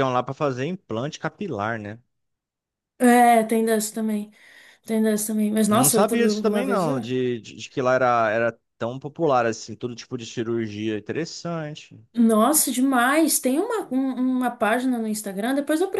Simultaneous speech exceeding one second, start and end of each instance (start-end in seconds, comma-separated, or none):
5.7-7.0